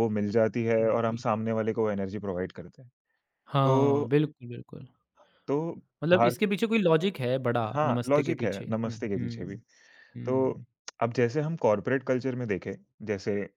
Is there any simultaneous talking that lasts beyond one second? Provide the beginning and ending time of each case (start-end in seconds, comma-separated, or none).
7.8-9.6